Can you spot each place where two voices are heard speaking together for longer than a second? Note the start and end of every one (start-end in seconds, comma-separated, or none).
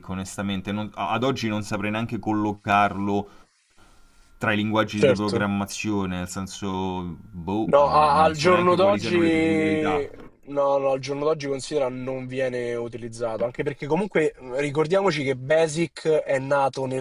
7.6-10.0